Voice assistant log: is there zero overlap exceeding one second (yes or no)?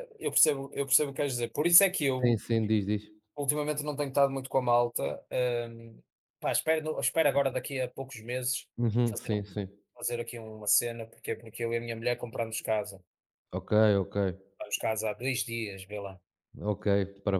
yes